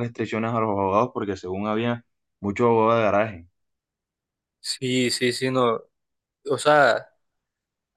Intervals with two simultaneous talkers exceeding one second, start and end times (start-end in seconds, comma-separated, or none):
none